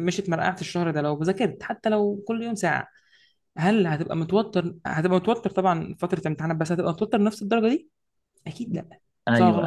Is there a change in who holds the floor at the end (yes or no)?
yes